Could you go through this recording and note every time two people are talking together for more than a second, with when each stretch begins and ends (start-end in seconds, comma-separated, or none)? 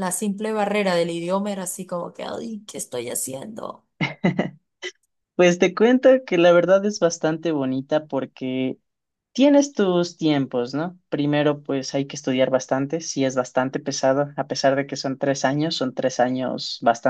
none